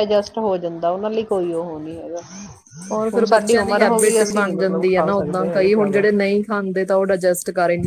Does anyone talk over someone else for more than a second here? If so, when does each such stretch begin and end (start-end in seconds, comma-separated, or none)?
3.1-6.0